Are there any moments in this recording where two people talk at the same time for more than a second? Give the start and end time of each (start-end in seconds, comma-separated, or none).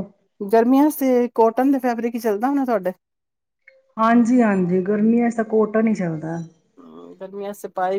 none